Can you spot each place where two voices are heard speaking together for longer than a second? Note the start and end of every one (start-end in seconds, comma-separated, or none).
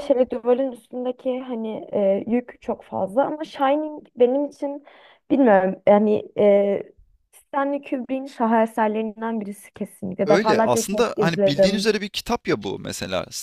10.2-11.9